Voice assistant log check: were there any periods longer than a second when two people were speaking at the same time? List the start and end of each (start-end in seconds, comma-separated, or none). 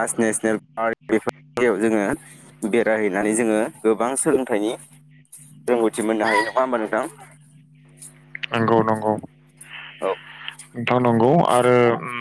none